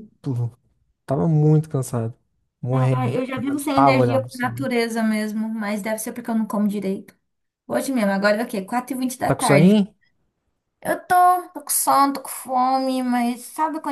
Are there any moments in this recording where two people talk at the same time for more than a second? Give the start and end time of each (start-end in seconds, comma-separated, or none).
2.7-4.7